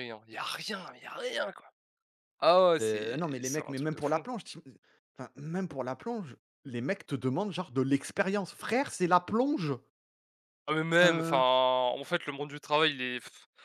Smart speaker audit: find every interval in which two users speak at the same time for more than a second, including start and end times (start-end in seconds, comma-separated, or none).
2.8-4.2